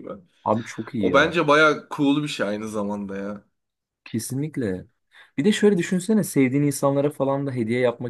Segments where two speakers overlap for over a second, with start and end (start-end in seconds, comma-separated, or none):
none